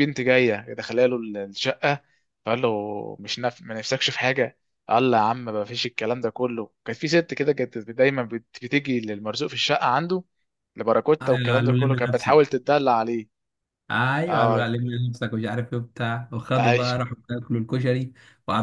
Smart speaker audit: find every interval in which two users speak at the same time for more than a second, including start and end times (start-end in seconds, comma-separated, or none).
11.2-12.5